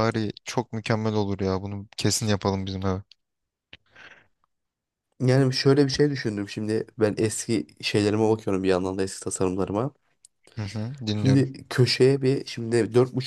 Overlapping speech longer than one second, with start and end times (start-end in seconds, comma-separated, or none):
none